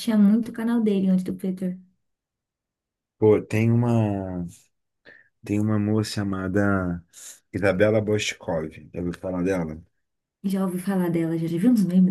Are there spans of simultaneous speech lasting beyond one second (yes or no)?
no